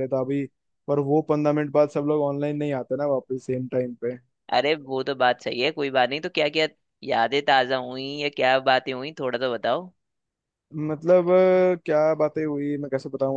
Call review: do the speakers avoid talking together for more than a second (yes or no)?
yes